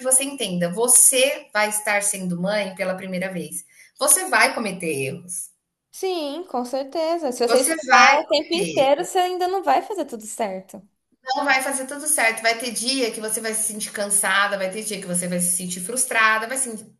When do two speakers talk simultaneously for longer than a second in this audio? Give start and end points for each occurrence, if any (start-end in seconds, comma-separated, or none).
7.5-8.9